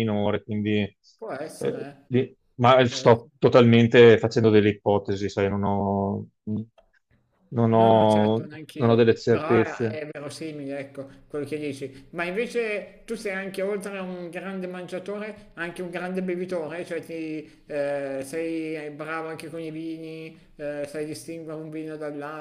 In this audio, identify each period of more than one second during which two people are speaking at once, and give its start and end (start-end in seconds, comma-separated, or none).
7.7-10.0